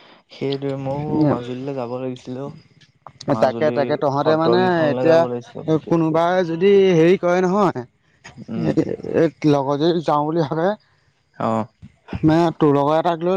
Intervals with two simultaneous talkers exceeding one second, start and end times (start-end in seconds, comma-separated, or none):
none